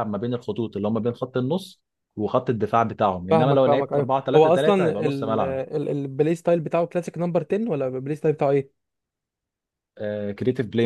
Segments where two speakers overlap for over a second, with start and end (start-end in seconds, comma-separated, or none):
3.3-5.6